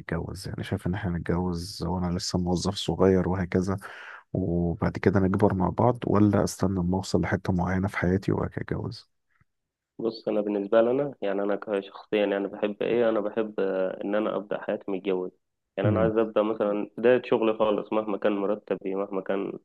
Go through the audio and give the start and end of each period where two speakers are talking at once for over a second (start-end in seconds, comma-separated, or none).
none